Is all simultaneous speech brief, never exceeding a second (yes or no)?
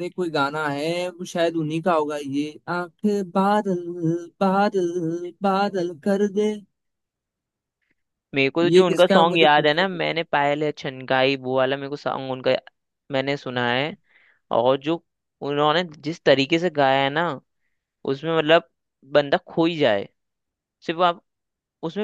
no